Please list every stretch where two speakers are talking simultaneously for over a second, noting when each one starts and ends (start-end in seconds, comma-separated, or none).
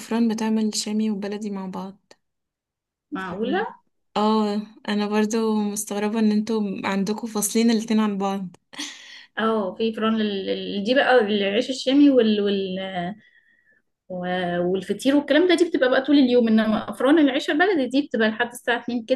none